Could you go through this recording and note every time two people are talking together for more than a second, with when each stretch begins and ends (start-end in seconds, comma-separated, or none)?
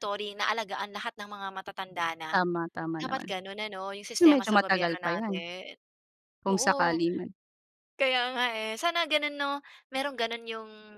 4.2-5.4